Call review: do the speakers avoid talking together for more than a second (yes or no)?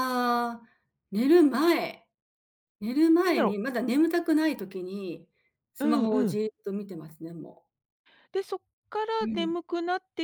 yes